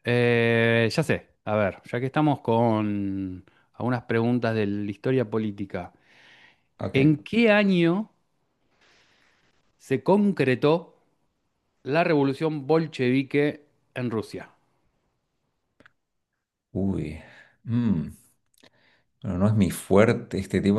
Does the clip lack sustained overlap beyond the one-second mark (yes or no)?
yes